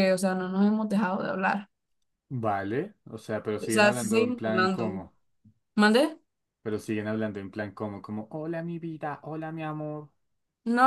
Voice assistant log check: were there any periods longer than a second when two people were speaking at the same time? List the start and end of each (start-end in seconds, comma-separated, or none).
3.6-5.0